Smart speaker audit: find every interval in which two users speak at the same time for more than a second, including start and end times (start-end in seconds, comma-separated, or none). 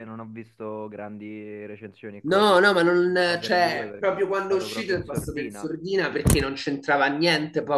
2.2-5.7